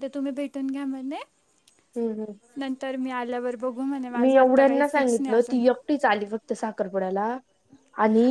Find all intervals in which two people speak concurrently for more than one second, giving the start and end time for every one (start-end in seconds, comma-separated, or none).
none